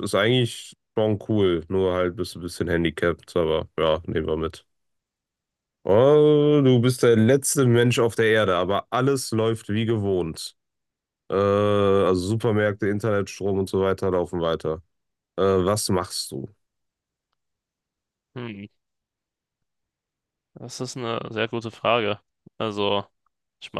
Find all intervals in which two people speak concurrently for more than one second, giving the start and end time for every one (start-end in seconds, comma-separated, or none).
none